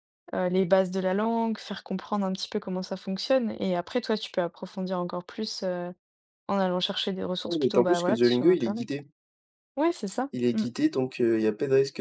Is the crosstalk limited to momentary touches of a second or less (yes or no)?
no